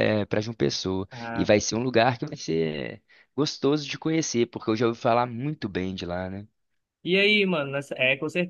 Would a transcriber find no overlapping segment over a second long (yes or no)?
yes